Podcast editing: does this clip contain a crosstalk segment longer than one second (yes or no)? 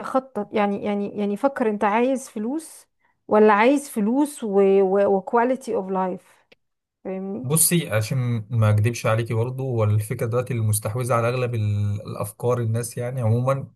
no